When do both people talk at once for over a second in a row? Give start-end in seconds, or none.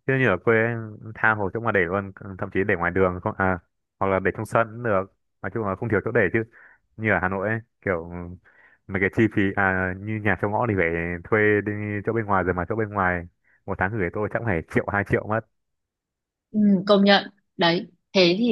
none